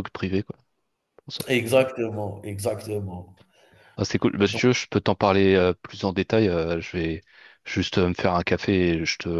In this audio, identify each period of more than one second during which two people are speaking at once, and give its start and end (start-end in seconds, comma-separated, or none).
none